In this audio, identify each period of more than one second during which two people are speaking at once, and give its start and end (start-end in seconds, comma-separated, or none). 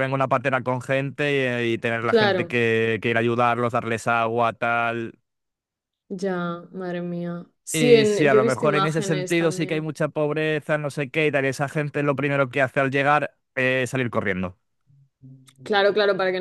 7.7-9.9